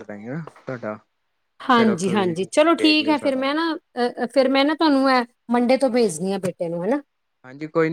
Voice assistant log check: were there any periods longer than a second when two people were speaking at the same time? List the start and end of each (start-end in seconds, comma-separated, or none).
1.8-3.4